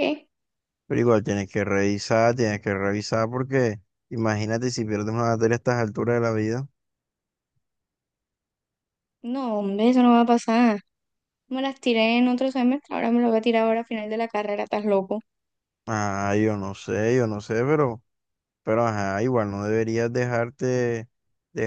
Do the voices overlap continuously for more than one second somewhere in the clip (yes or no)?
no